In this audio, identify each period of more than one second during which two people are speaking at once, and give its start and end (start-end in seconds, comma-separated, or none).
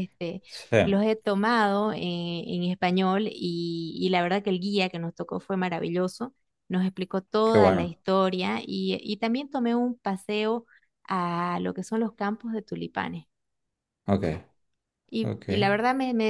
none